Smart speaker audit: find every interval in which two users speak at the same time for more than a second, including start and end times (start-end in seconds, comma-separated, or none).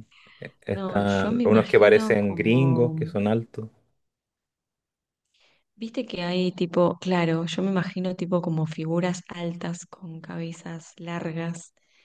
0.7-3.0